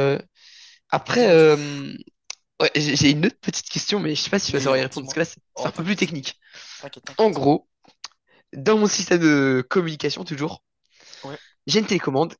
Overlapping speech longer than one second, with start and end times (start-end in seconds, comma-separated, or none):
4.5-6.2